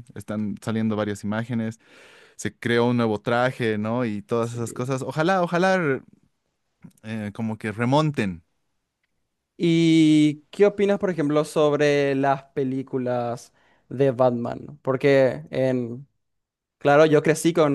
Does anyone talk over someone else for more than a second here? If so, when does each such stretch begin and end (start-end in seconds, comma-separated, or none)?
none